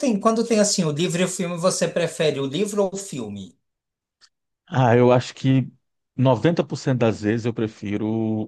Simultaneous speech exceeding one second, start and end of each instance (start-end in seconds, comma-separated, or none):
none